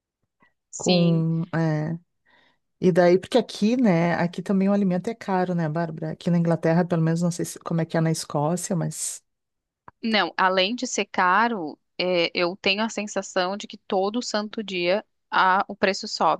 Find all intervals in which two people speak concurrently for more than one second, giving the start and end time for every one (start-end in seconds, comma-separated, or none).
none